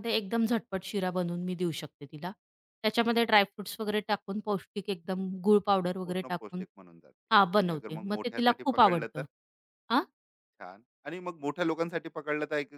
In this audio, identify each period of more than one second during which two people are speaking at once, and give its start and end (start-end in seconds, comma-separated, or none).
7.6-9.2